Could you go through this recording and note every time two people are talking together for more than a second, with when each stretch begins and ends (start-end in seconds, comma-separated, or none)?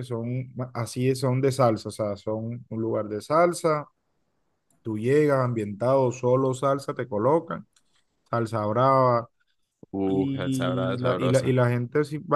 10.1-11.6